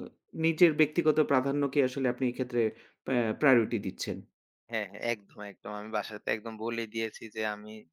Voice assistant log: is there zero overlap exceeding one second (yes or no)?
yes